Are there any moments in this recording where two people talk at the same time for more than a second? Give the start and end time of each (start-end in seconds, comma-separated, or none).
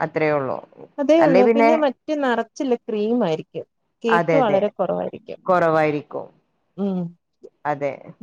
none